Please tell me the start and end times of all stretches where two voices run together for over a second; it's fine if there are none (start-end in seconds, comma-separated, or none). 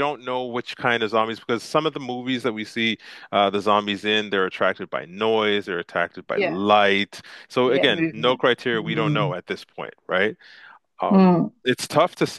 7.7-9.3